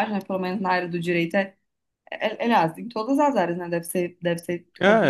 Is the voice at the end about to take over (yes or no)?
yes